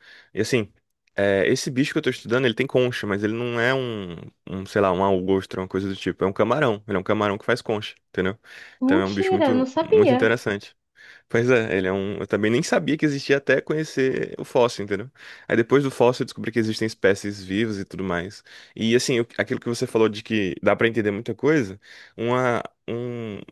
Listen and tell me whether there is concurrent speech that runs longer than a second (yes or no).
yes